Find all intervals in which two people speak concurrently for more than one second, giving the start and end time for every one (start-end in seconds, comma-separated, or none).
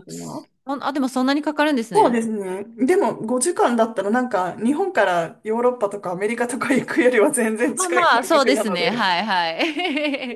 7.8-9.1